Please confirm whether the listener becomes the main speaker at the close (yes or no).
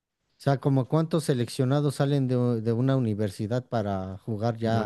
yes